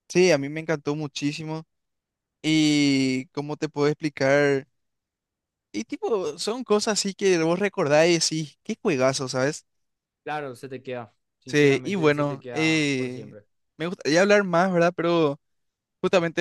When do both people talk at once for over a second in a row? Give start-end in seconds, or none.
11.5-13.4